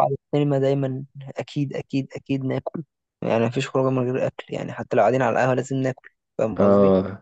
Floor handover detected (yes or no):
yes